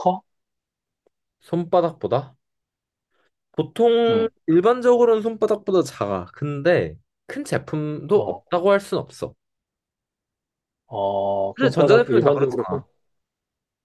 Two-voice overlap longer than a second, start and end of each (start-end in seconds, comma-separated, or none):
11.5-12.8